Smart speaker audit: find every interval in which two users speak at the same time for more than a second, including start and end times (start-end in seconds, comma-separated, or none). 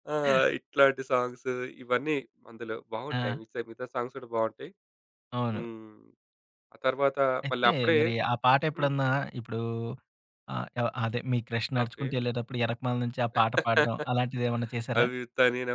none